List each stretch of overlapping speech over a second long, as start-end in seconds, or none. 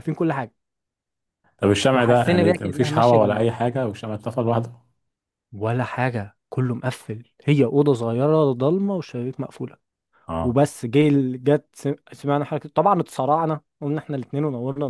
1.9-3.5